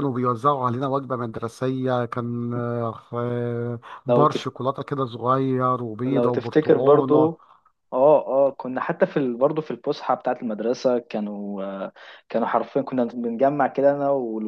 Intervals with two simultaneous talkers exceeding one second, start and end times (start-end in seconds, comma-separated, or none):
6.1-7.3